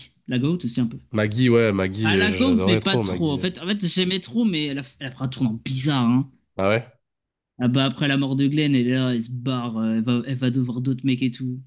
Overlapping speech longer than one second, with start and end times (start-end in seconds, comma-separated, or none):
2.0-3.5